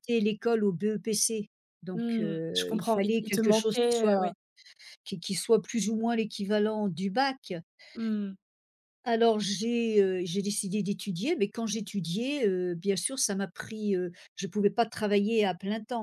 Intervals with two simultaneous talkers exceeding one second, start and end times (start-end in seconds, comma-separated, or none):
1.9-4.3